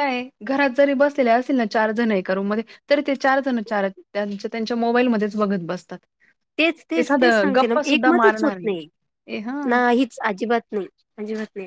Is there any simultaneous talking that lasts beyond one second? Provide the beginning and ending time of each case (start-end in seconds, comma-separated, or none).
7.0-8.6